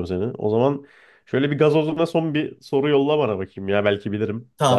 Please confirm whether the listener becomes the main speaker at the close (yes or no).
yes